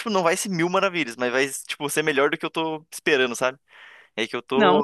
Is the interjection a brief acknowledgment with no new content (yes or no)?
no